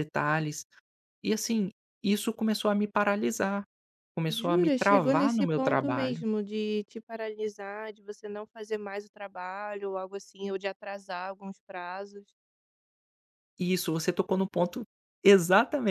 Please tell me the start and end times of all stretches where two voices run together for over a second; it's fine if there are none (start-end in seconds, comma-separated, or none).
4.3-6.2